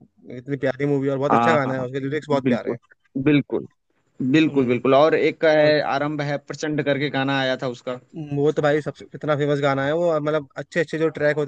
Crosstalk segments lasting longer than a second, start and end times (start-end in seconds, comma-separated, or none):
1.3-2.8